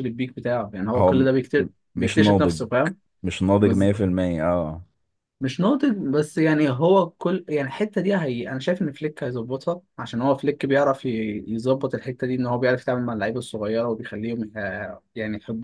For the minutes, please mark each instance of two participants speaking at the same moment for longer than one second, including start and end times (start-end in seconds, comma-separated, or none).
0.9-2.6